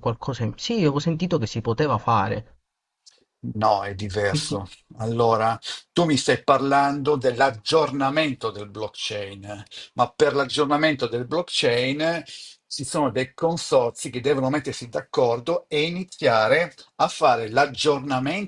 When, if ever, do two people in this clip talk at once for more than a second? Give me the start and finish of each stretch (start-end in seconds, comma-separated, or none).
none